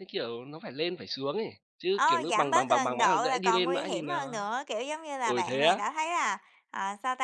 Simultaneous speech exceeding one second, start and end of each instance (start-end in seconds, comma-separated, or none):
1.9-4.4